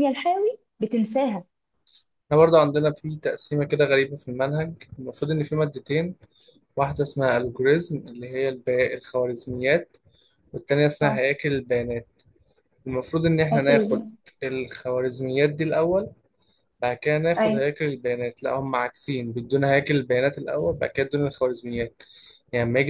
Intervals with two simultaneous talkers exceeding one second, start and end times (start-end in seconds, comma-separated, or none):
none